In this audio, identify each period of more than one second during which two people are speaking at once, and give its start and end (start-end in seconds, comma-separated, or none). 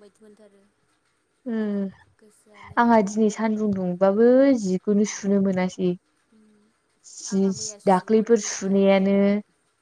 7.3-9.1